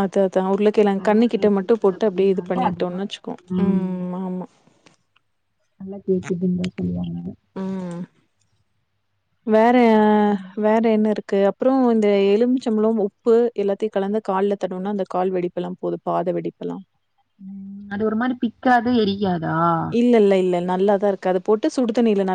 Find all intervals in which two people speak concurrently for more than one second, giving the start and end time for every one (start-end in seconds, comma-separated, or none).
1.0-3.1